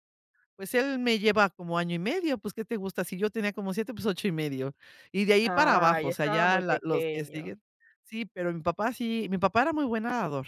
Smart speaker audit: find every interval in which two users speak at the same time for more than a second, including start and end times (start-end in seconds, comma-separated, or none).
5.4-7.5